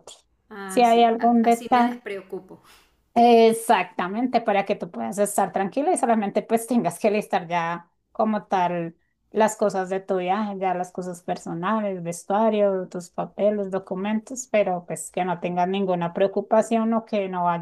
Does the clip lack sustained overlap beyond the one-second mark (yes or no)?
no